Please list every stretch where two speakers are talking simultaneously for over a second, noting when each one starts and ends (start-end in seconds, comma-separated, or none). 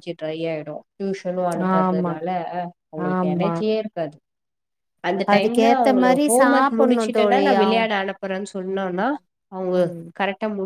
5.3-7.8